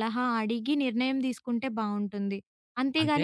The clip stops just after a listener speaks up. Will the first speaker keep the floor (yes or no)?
yes